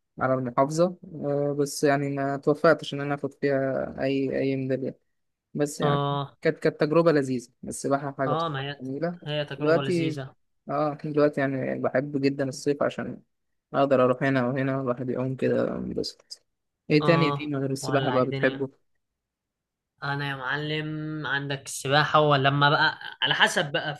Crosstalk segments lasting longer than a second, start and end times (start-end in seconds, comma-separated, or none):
17.0-18.6